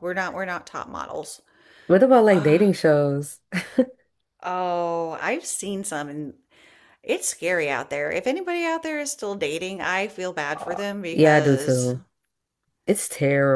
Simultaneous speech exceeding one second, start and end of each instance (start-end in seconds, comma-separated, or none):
10.6-11.9